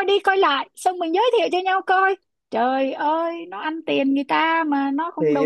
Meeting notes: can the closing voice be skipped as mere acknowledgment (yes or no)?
no